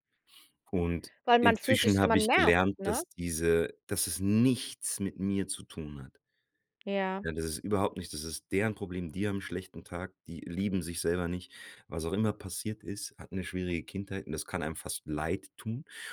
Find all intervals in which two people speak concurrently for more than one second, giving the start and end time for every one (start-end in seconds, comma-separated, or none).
1.2-3.0